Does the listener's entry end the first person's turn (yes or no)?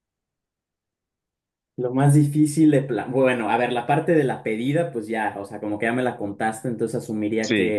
no